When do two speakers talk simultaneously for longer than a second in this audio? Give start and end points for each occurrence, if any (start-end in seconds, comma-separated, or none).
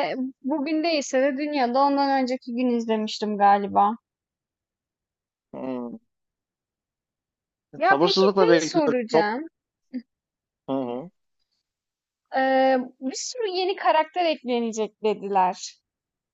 7.9-9.4